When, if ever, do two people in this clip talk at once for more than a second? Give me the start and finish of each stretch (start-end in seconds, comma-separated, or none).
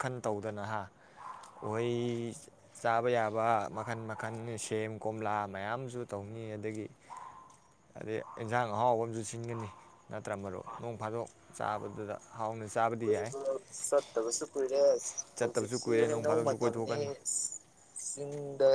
15.4-17.0